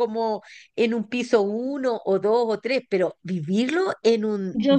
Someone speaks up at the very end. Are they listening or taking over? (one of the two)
taking over